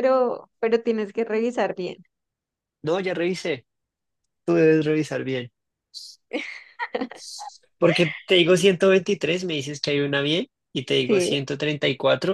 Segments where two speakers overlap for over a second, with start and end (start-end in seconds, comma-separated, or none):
none